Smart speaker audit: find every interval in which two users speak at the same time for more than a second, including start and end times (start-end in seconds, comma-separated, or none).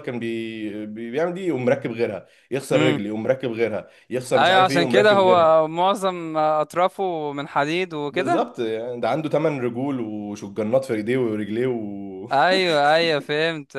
4.3-5.7